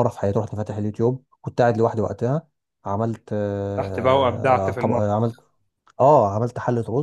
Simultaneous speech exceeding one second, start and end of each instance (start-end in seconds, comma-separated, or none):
3.8-5.4